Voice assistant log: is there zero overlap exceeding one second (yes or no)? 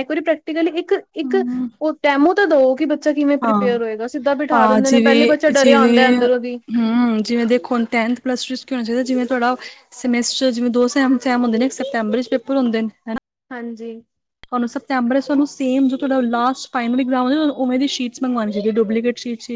yes